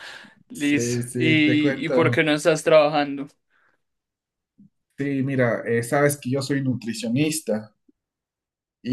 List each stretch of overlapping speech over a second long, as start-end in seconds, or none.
0.5-2.3